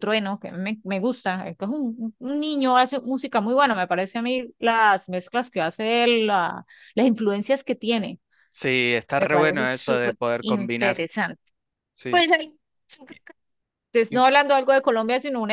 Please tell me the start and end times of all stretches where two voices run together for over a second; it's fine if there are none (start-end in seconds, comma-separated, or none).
9.2-11.0